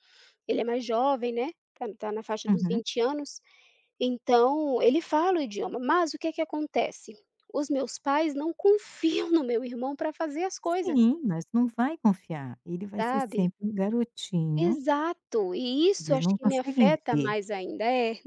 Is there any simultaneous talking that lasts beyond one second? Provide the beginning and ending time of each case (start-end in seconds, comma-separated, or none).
16.0-17.3